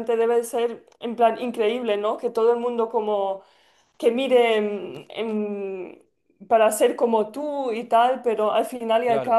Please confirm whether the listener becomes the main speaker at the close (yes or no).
no